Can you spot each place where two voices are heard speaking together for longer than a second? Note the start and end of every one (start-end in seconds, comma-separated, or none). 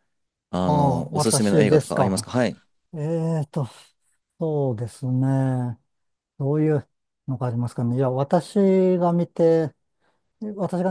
0.6-2.3